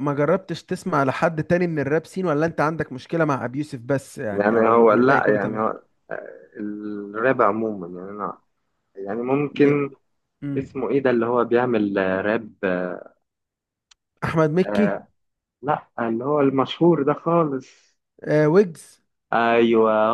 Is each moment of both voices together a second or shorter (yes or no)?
no